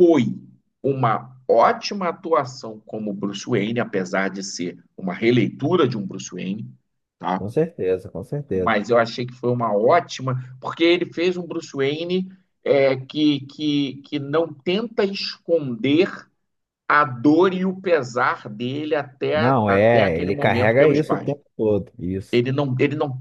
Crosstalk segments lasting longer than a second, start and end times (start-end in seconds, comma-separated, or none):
19.3-21.3